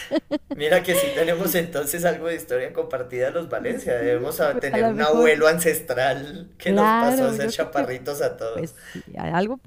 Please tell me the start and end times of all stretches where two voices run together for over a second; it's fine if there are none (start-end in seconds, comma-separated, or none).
4.0-5.3, 6.6-7.9